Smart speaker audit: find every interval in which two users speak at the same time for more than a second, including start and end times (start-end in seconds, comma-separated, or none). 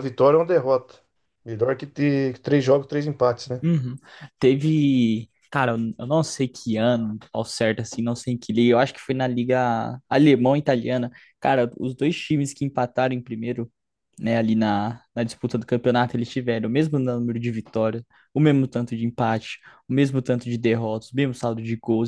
none